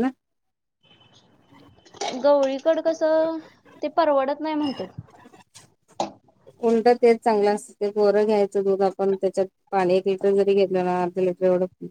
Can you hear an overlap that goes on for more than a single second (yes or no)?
no